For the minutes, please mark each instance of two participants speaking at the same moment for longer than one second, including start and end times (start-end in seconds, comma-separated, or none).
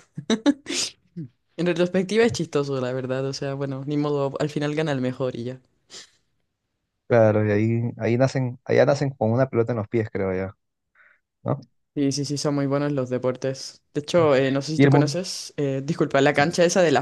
none